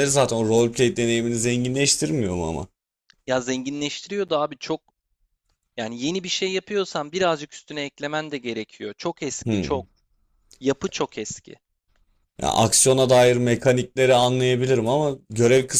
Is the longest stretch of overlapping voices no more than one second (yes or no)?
yes